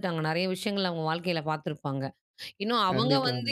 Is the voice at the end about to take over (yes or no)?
no